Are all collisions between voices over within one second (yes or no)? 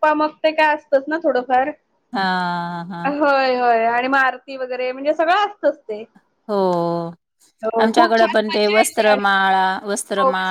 no